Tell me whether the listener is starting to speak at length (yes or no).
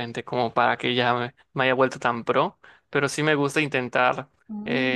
no